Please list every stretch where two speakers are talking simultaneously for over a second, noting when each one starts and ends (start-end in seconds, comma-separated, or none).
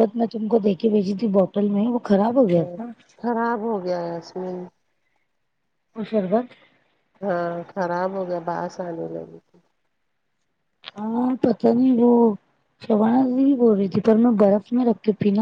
none